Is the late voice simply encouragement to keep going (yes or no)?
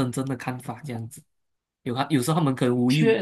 yes